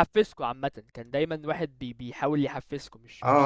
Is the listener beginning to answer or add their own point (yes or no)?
yes